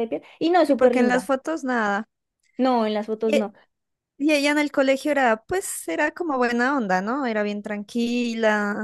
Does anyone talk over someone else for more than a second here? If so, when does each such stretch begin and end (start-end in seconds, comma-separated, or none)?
none